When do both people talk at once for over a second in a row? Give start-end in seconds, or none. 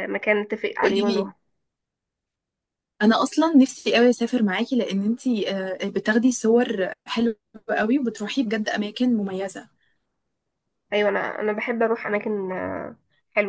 none